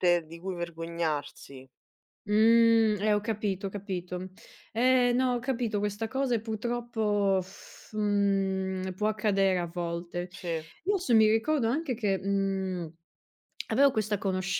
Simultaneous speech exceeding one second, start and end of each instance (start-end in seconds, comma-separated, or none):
none